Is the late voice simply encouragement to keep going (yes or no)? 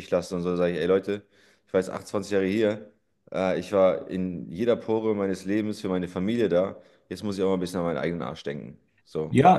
no